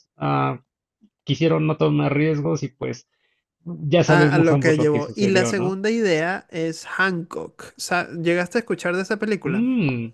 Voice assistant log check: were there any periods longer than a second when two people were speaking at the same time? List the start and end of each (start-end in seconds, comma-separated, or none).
4.1-5.8